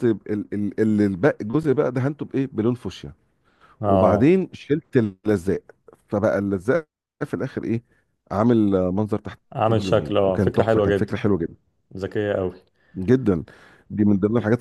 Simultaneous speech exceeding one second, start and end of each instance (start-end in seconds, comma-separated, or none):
9.5-11.1